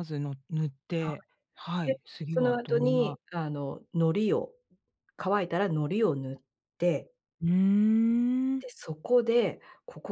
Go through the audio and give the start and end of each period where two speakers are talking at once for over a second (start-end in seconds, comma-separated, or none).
1.8-3.2